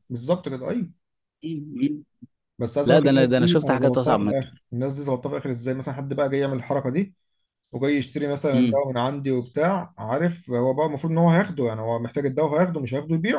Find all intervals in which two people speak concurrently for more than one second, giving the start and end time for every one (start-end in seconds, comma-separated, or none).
2.9-4.5